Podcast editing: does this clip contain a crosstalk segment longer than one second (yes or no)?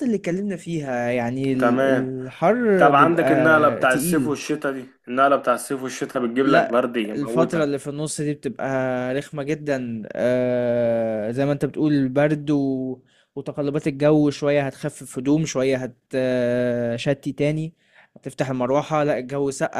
yes